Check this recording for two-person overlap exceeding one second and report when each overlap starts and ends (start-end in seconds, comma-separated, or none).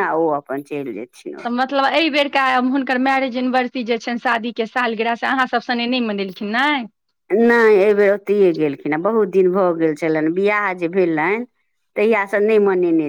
none